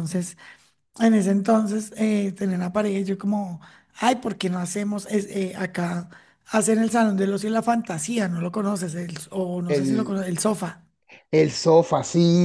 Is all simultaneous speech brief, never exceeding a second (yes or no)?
yes